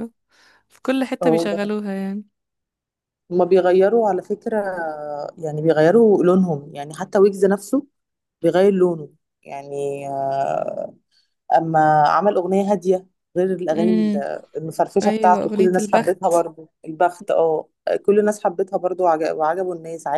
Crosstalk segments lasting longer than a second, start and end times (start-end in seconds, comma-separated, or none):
15.0-16.4